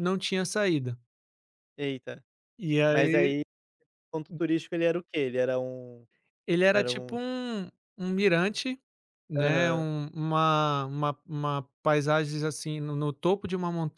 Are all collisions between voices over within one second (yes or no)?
yes